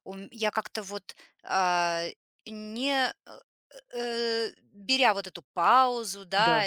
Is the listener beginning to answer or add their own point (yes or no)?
no